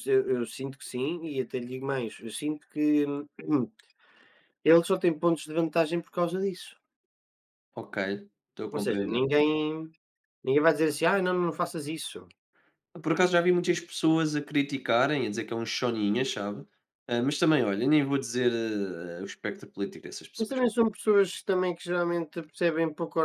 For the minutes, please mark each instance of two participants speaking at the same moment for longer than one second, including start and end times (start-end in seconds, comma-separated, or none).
none